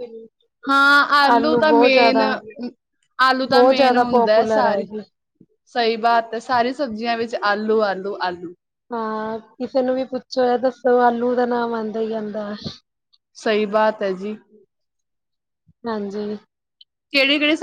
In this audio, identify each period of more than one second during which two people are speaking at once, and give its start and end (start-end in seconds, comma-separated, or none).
3.5-4.8